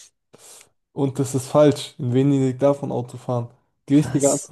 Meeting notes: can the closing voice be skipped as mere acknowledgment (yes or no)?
yes